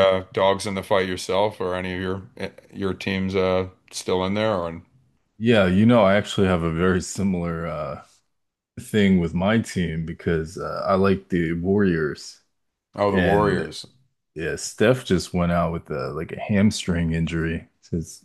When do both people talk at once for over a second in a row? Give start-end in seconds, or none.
none